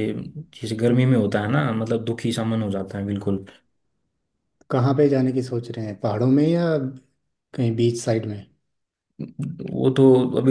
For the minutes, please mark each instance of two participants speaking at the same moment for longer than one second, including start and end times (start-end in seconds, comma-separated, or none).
none